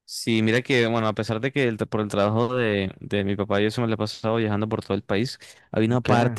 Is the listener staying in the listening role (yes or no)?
yes